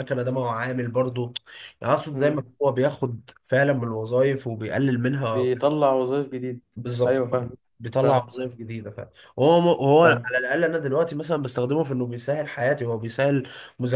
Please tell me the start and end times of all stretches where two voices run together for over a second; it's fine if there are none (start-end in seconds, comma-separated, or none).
none